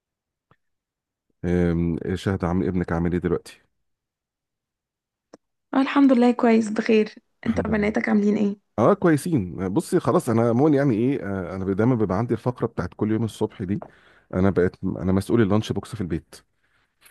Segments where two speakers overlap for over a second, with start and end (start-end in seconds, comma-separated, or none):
none